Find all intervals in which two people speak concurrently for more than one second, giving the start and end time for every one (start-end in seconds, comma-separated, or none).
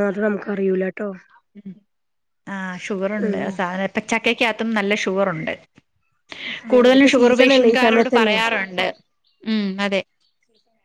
6.9-8.4